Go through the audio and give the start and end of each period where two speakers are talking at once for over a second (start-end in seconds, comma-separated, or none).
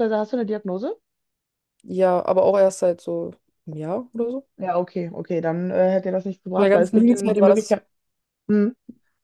6.6-7.8